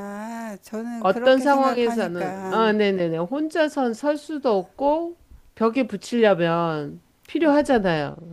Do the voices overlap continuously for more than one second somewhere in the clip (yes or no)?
yes